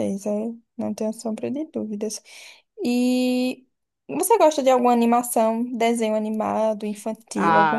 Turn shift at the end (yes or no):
yes